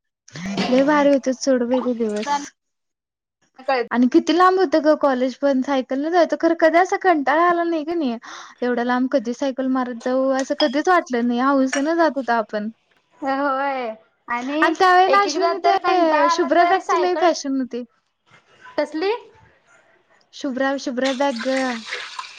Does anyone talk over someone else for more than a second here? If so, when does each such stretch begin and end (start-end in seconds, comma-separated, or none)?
15.1-17.3